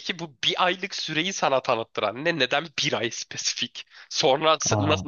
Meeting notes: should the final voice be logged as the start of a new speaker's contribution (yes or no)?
no